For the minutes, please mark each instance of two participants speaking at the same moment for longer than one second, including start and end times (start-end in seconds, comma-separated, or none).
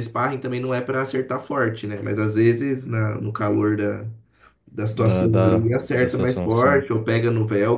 4.9-6.9